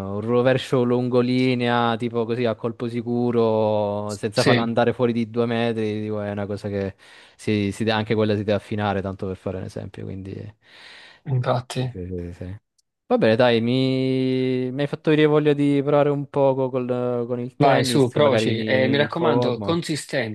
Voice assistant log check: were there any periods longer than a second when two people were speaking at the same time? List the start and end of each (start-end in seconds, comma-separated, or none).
17.6-19.8